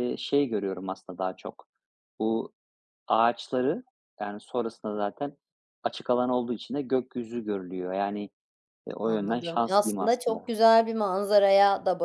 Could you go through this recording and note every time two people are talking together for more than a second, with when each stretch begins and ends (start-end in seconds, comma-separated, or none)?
9.0-10.5